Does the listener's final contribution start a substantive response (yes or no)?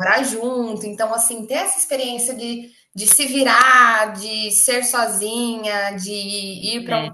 no